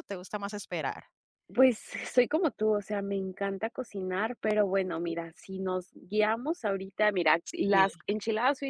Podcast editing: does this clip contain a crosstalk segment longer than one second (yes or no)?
no